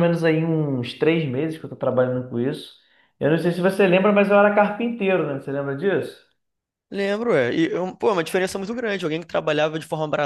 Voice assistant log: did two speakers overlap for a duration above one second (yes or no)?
no